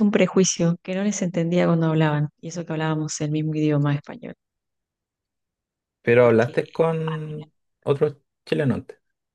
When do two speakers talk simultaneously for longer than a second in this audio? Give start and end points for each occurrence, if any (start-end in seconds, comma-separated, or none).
none